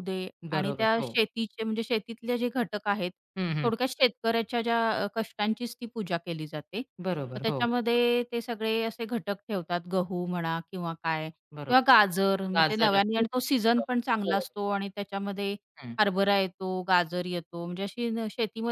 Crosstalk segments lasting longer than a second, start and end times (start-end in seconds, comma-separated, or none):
12.6-14.4